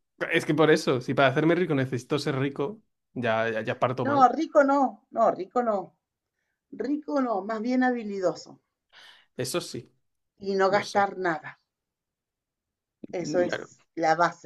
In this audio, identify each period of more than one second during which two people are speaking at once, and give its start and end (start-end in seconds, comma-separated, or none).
none